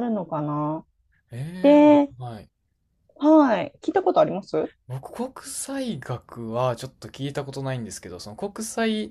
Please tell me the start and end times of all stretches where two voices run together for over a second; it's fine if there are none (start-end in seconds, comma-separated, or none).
none